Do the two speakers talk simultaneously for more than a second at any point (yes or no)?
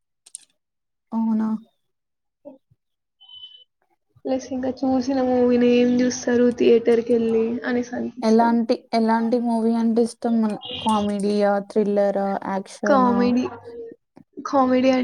no